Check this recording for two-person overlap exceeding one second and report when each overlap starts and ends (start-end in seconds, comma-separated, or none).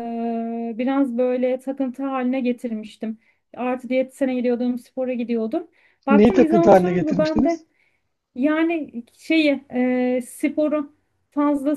6.1-7.7